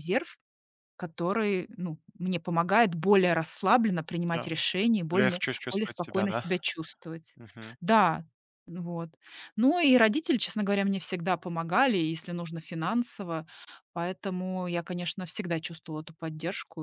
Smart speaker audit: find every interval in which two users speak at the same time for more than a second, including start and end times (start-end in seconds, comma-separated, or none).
5.1-6.4